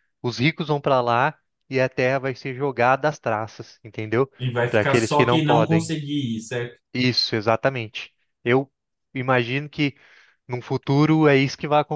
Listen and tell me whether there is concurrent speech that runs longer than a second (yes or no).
yes